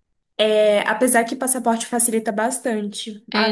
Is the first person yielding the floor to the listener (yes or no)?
yes